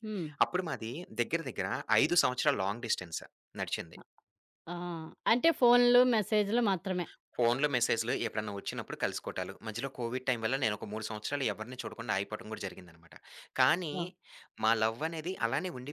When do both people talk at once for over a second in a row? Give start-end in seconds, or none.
none